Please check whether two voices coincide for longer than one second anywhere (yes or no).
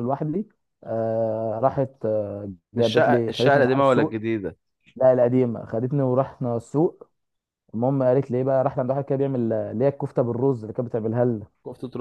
yes